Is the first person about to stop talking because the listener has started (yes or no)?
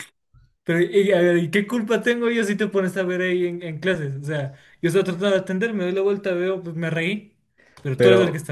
yes